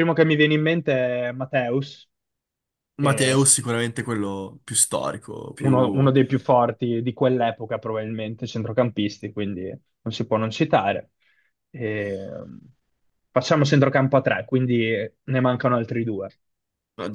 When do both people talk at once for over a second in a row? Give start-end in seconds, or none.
none